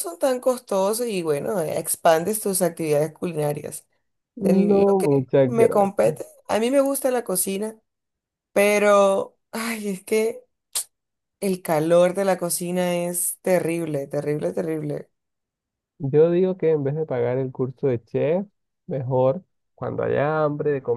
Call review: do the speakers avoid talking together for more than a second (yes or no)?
no